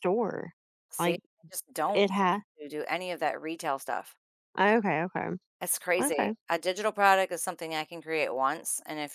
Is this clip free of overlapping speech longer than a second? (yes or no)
yes